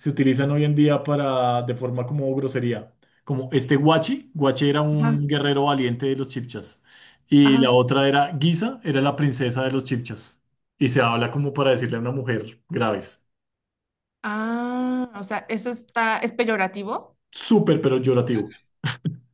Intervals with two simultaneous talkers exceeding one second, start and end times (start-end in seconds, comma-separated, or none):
none